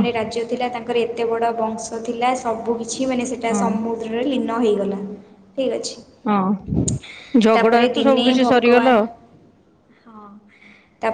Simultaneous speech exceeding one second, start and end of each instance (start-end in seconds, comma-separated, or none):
7.5-9.0